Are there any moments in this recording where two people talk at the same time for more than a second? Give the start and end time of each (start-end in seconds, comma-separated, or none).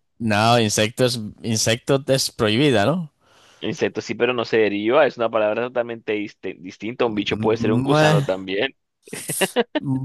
7.0-8.3